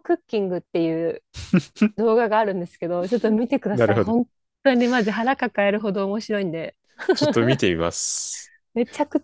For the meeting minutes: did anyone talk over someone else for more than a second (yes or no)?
no